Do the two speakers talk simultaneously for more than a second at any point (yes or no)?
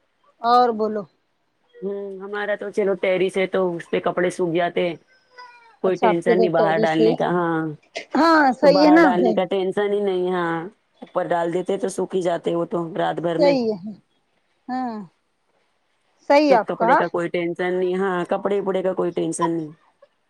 yes